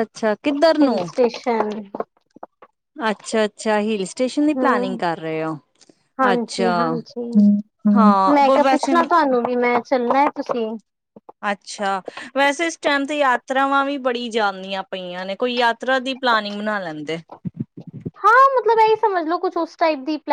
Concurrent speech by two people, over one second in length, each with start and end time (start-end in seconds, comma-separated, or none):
none